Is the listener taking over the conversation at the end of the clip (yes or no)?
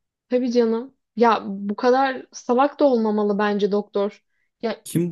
yes